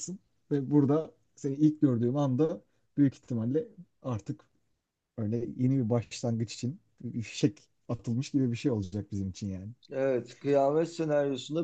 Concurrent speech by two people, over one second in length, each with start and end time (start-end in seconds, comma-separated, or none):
none